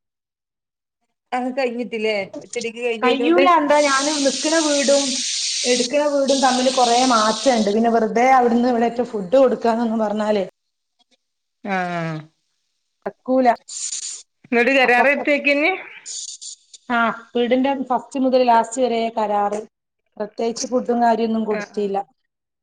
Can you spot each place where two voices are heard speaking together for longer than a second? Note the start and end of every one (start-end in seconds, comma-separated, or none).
none